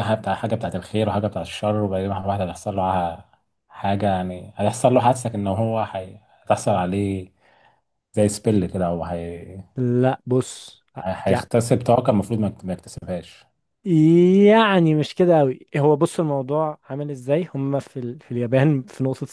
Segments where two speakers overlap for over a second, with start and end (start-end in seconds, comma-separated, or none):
none